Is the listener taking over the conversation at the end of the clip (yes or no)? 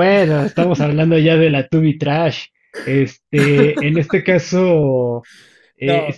no